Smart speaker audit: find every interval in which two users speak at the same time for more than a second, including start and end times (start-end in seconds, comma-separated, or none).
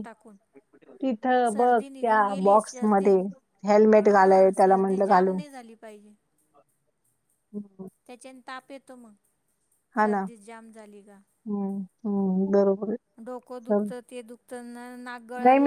1.5-3.0, 4.0-5.3